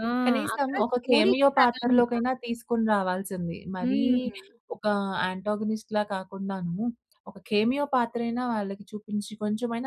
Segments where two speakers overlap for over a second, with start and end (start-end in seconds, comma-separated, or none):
0.6-2.1